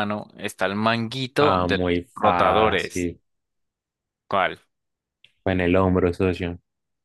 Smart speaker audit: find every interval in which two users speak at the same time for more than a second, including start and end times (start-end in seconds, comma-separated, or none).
1.4-3.1